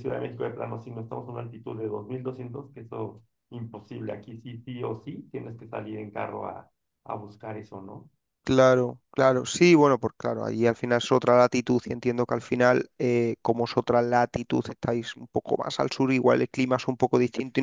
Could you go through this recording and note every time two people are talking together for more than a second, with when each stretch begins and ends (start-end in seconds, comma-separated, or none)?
none